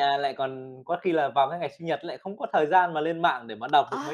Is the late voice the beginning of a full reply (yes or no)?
yes